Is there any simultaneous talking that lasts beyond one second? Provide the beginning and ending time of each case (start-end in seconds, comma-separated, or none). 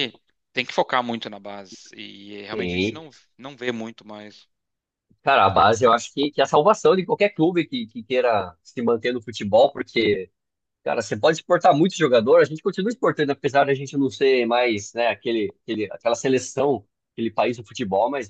none